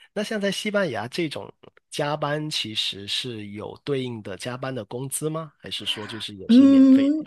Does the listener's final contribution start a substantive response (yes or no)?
yes